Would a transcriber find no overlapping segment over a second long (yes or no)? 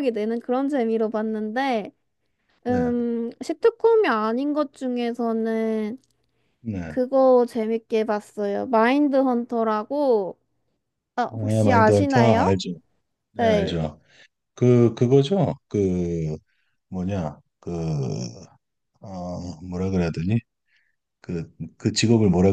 no